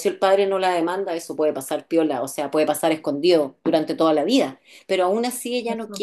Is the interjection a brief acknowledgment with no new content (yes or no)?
yes